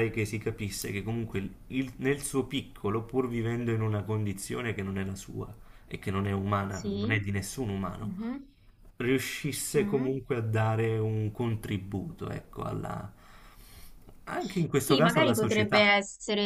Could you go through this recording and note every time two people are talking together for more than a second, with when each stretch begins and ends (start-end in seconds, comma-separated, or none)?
14.7-15.9